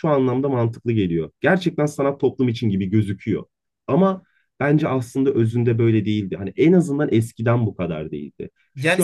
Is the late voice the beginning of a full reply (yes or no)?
yes